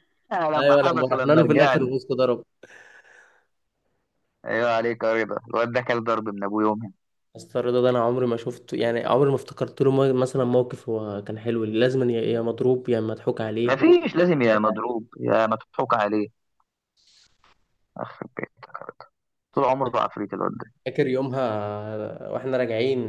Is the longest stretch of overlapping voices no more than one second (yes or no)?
no